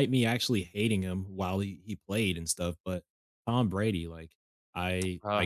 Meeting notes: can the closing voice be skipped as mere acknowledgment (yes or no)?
yes